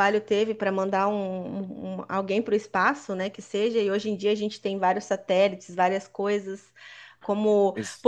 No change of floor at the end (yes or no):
yes